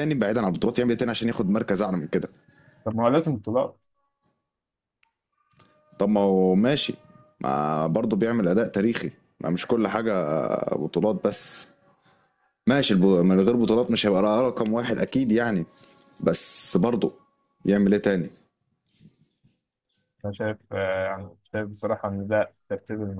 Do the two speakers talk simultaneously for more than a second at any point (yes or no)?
no